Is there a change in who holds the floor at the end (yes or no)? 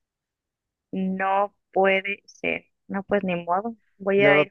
no